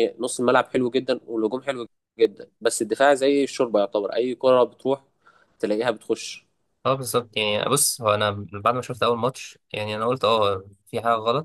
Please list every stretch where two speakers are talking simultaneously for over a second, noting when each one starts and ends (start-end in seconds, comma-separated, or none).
none